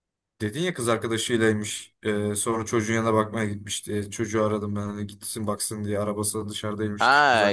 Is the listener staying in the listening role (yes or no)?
no